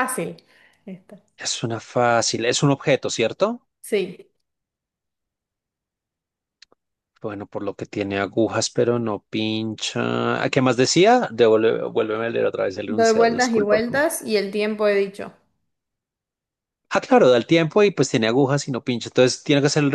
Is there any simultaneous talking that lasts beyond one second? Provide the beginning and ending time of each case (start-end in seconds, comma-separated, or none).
12.8-14.1